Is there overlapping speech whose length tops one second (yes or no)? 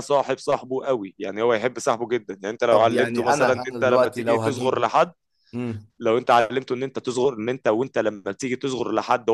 yes